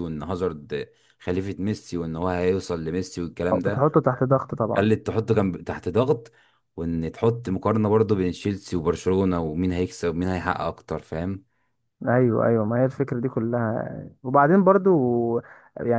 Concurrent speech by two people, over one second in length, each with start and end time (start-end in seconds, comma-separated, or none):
none